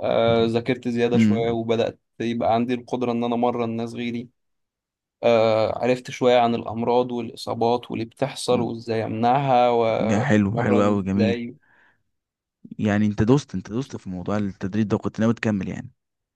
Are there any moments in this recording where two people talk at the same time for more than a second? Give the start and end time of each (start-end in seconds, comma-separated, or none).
10.0-11.4